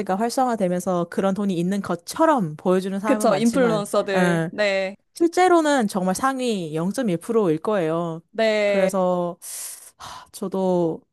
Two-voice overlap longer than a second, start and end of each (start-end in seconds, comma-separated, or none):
3.0-4.5